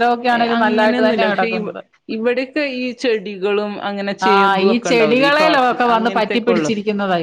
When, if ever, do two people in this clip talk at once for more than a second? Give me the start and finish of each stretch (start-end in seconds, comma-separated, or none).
4.3-6.7